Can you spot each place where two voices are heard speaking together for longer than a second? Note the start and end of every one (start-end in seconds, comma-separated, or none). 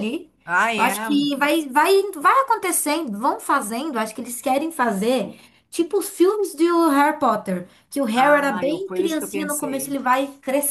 8.2-10.0